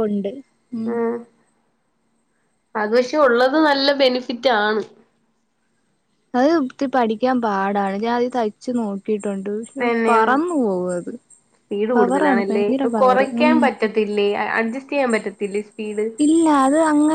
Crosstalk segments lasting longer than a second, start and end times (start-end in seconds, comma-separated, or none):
none